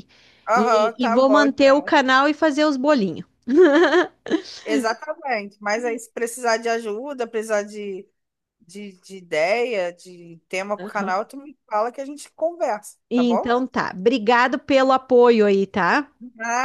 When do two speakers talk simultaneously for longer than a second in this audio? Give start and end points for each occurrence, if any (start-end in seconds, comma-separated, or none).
0.5-1.9